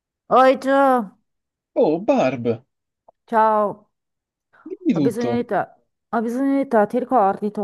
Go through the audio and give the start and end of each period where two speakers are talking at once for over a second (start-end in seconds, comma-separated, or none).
none